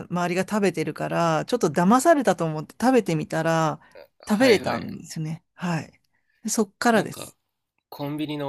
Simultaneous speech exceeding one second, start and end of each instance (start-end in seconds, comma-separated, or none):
none